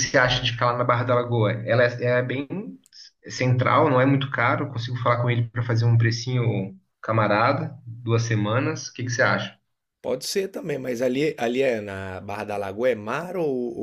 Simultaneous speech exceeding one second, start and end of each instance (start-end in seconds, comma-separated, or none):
none